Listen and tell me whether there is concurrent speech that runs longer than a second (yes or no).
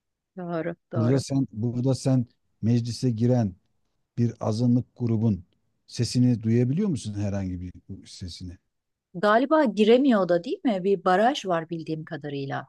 no